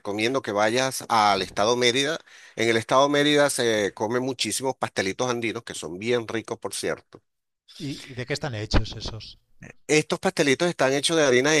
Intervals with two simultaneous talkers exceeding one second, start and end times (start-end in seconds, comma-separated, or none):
none